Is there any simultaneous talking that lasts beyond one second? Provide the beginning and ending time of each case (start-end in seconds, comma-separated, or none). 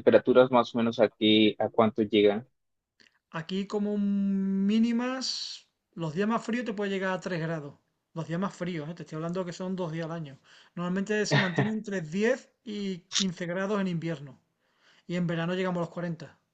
none